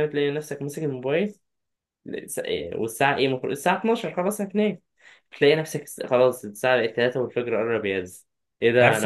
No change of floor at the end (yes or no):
no